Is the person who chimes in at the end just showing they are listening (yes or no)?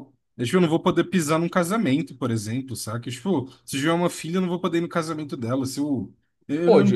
no